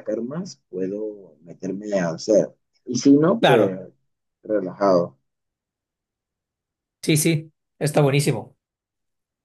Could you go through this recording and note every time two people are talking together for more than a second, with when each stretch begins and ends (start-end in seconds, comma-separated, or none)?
none